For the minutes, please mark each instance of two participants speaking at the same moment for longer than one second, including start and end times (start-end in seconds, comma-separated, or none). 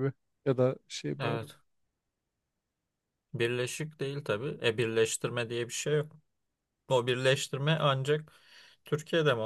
none